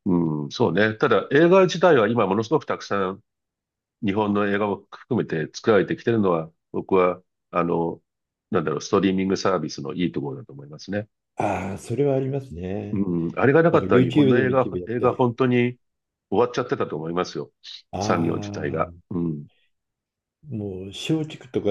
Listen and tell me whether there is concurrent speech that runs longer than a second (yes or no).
yes